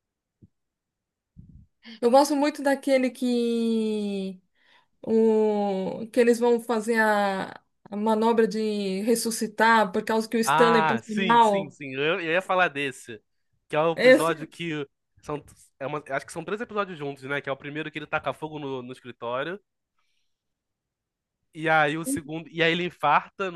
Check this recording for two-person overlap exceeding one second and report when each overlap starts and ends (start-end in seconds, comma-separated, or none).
10.4-11.8